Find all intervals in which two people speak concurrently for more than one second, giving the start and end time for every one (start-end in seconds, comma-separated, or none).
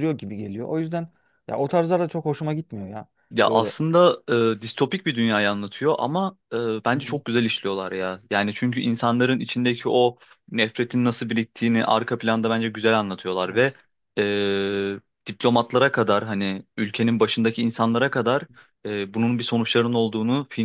none